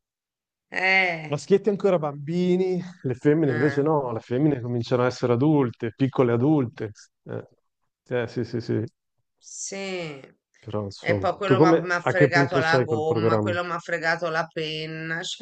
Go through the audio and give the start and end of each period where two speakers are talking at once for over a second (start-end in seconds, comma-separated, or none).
11.0-13.5